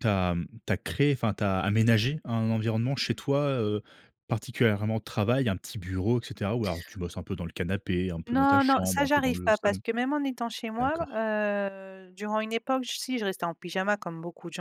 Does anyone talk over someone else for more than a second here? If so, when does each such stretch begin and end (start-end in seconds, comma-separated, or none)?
8.3-9.8